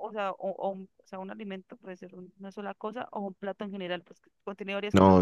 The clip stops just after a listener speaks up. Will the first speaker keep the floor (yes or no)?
no